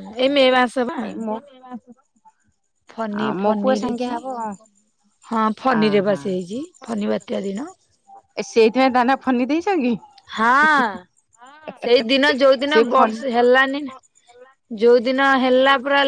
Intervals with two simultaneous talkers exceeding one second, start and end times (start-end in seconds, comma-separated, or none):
12.7-14.0